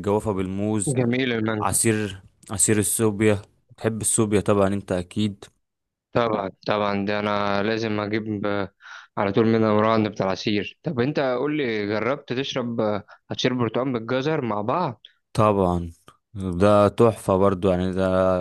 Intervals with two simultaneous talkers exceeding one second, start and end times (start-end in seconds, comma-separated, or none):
none